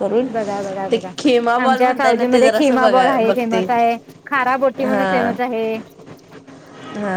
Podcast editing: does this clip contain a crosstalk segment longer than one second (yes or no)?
yes